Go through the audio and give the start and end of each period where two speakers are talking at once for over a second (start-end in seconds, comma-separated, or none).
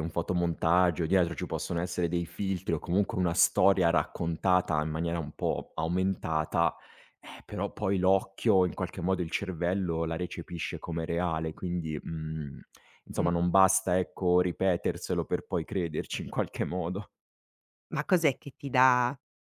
none